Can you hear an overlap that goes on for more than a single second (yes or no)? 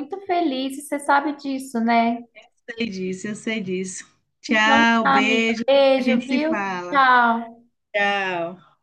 yes